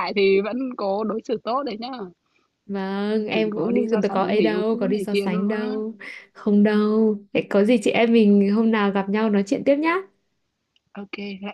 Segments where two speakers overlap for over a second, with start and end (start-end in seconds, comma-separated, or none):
3.3-5.8